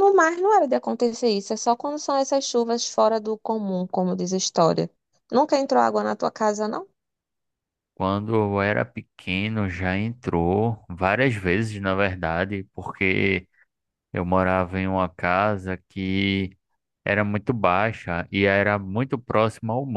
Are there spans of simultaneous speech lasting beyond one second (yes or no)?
no